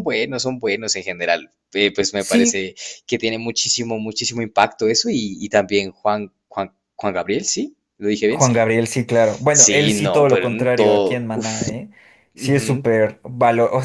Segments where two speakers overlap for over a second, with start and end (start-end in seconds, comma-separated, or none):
9.5-11.6